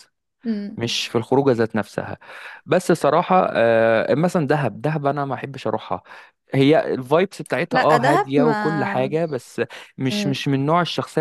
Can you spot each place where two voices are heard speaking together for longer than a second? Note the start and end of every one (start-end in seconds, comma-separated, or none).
7.7-9.2